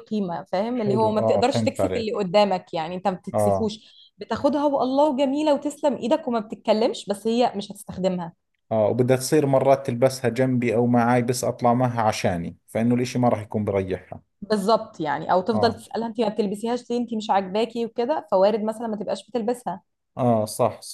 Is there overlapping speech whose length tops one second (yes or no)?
yes